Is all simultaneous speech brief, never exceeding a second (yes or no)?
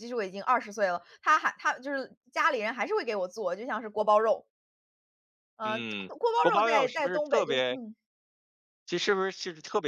no